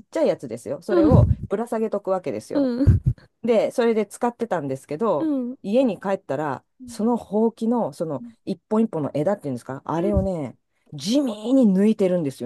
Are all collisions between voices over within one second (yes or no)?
yes